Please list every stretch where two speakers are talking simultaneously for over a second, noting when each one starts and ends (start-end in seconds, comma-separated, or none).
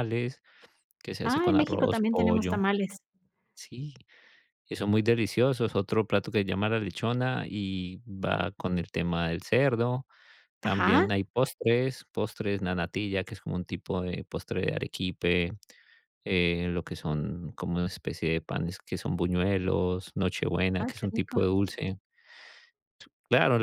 1.2-2.6